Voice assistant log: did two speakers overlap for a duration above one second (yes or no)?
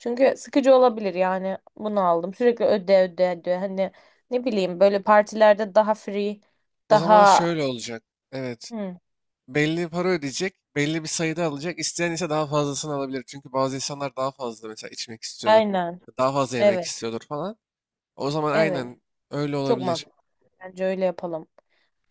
no